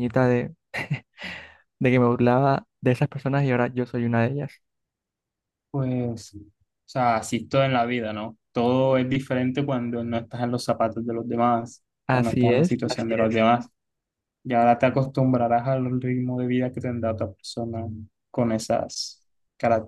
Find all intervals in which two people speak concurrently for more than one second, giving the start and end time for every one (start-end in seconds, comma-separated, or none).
12.1-13.4